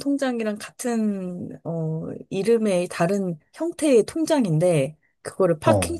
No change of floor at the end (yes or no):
yes